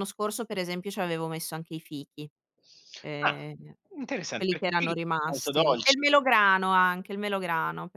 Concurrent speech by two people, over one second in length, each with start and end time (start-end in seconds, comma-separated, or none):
4.4-6.0